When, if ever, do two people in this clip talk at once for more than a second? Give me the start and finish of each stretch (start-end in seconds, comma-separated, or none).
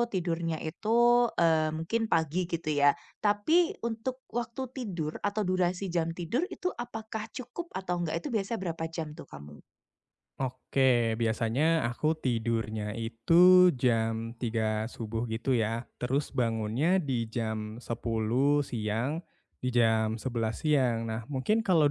none